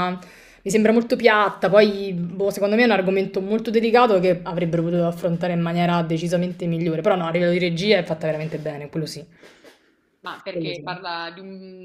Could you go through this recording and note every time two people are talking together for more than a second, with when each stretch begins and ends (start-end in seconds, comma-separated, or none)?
none